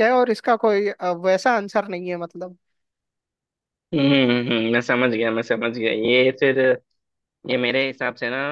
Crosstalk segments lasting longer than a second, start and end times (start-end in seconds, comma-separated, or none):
none